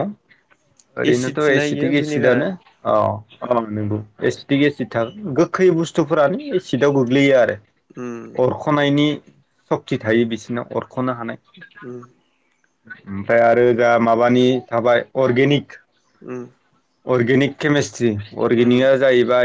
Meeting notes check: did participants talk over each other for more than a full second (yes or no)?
yes